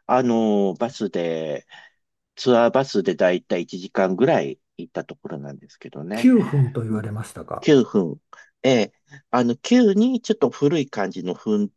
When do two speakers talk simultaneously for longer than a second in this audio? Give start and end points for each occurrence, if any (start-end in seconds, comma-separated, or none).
none